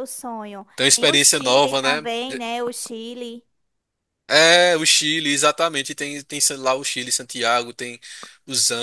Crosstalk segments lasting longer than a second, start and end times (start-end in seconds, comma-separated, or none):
0.8-2.0